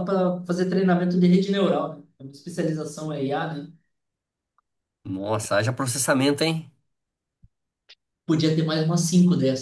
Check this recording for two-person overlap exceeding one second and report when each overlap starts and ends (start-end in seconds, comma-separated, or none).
none